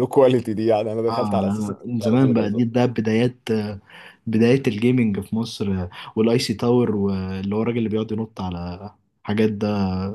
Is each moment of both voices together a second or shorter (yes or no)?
no